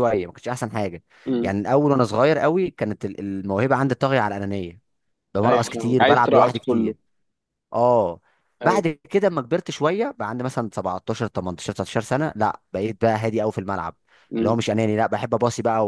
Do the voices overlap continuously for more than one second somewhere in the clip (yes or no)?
yes